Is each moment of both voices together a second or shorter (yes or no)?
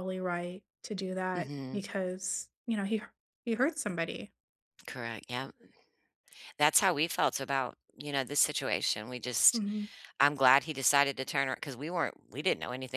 yes